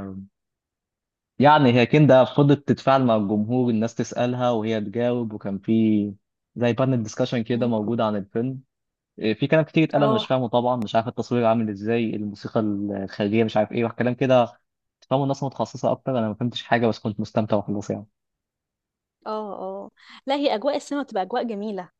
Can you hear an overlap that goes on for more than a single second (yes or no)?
no